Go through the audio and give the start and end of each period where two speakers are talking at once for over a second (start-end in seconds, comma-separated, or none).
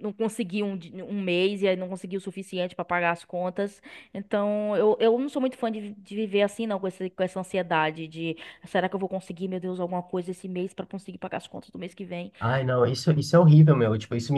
none